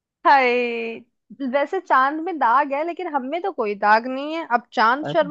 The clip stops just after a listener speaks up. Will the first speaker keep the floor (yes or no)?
yes